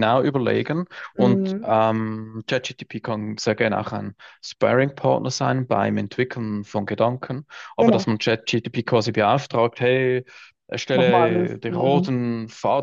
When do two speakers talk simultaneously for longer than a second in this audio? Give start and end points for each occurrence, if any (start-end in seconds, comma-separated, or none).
10.9-12.2